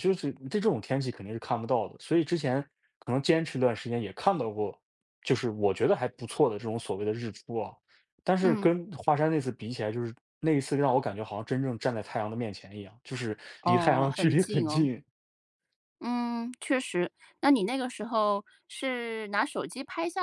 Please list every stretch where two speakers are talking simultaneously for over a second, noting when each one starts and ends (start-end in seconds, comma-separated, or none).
13.6-14.9